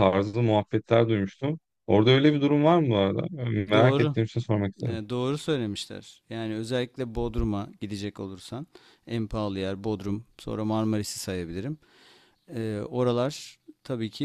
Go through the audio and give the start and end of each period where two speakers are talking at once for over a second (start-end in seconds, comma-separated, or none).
none